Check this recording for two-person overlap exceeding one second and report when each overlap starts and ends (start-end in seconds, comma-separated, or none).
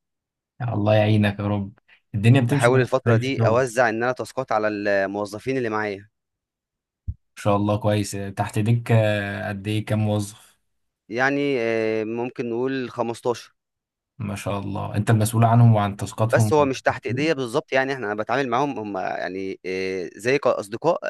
2.4-3.6